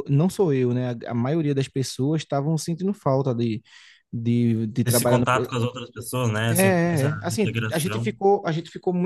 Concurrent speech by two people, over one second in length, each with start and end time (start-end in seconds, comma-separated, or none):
6.5-8.2